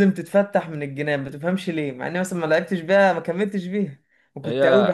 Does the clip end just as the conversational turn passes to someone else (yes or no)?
no